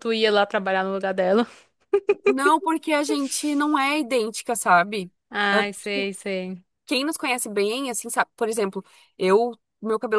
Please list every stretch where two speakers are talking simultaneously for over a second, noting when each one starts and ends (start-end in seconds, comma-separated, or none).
none